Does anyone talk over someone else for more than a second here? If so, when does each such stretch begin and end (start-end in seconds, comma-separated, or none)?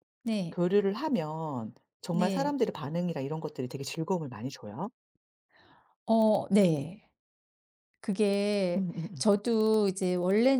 none